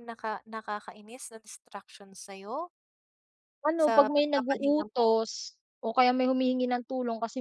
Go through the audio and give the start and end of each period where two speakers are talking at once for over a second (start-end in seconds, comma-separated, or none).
3.8-5.2